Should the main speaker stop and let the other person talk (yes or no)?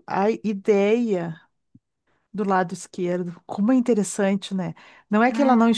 no